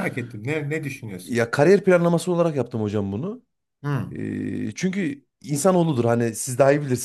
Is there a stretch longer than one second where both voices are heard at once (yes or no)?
no